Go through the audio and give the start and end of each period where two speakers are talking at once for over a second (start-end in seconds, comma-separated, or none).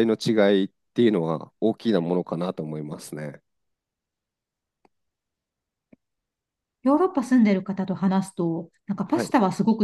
none